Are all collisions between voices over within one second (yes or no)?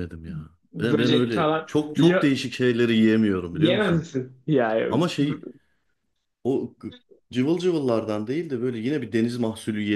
no